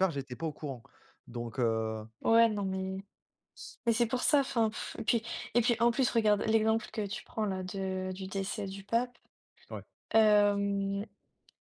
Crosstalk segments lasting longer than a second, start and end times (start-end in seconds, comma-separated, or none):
none